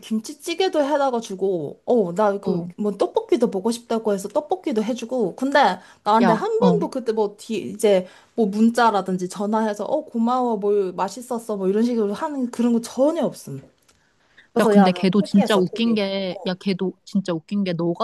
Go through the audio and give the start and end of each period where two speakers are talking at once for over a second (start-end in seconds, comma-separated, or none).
14.6-16.1